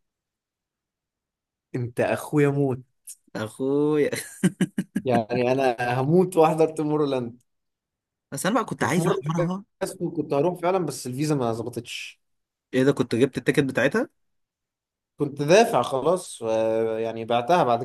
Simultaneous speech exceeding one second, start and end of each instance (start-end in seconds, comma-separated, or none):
none